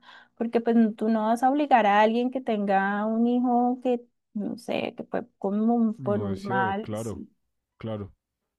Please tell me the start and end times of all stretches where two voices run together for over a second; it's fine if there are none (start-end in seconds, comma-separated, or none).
6.0-7.2